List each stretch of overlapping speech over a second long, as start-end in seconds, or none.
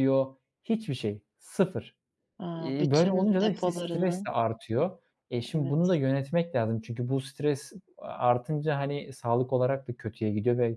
2.5-4.3